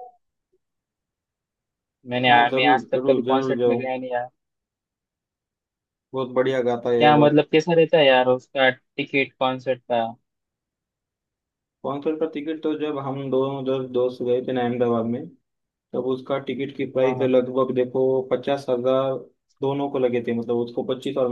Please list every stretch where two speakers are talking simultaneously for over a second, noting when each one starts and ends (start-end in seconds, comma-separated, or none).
2.3-3.8